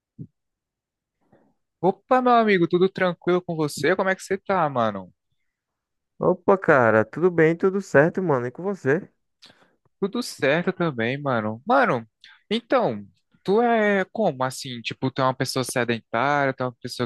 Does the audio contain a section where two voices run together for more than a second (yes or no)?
no